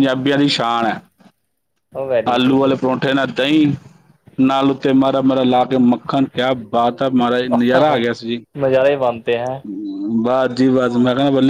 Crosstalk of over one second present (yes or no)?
no